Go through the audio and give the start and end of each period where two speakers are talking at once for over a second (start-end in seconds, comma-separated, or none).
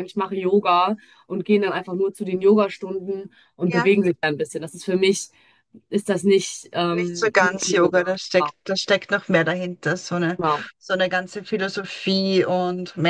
6.9-8.1